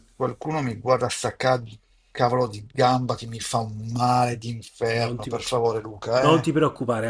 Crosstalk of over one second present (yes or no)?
no